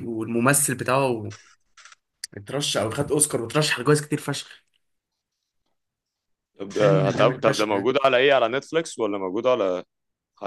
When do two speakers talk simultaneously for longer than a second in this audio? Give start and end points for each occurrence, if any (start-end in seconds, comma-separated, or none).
6.7-7.9